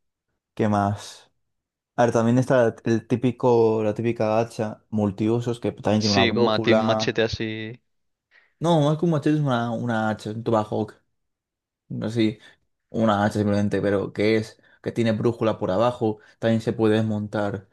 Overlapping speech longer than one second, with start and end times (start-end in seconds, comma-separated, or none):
6.0-7.2